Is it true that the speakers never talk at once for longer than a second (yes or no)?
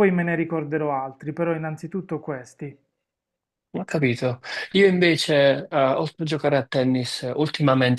yes